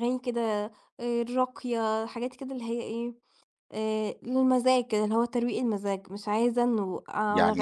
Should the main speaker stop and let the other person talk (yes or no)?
yes